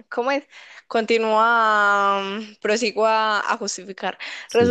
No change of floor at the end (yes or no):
yes